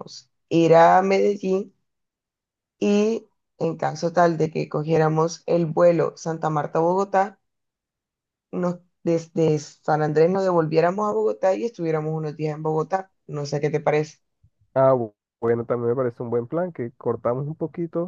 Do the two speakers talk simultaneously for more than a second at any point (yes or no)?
no